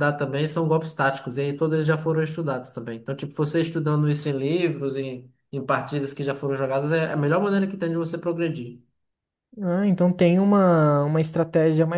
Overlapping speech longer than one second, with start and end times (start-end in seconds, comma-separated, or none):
none